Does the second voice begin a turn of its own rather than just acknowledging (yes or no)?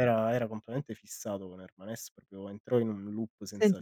yes